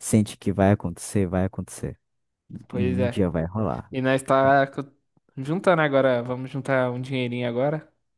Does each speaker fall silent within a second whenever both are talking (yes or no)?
yes